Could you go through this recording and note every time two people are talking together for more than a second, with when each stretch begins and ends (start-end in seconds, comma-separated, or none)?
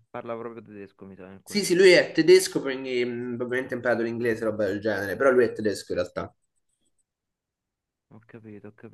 none